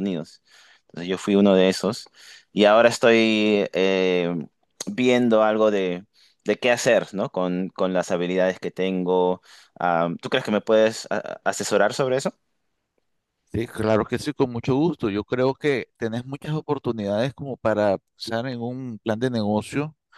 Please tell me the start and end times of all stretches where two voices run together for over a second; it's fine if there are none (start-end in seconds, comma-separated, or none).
none